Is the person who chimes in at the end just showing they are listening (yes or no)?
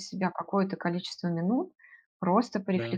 yes